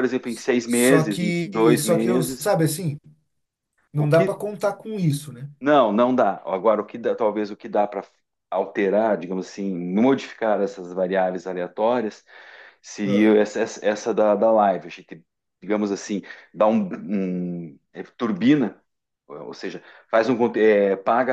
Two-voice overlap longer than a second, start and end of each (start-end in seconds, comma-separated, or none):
0.7-2.5